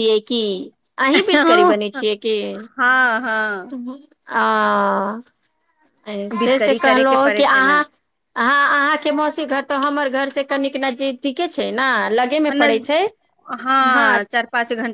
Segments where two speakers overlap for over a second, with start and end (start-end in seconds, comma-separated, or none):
6.4-7.8